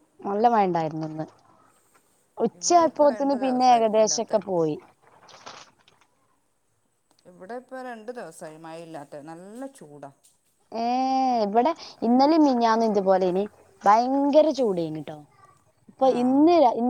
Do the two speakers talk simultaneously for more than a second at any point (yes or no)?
yes